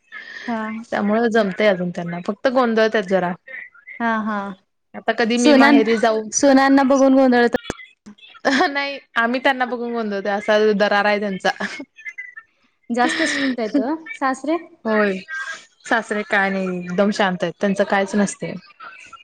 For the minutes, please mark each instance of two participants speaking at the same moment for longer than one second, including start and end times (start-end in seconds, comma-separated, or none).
none